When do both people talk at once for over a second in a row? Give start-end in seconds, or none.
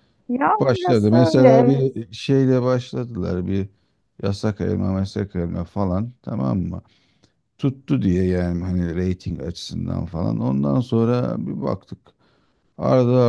0.6-1.8